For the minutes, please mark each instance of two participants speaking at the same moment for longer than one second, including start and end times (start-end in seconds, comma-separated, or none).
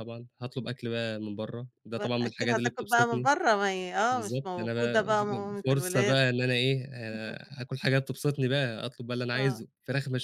2.0-3.3, 4.1-6.2